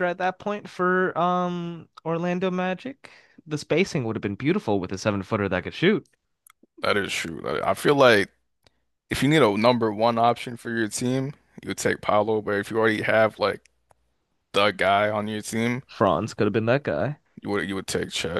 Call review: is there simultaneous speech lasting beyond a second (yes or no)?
no